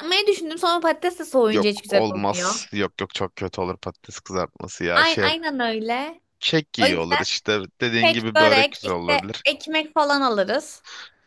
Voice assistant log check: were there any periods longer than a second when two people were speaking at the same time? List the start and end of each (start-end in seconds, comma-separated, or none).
1.5-2.7, 8.0-9.4